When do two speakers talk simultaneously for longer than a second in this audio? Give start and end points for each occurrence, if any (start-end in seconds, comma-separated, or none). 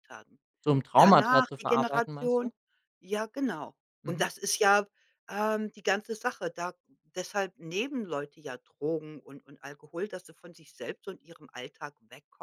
0.9-2.5